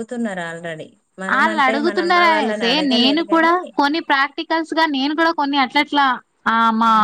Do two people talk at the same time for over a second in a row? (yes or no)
yes